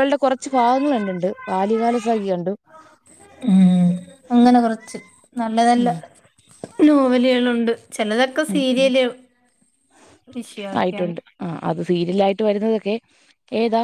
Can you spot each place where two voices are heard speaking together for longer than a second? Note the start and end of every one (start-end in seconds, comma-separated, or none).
none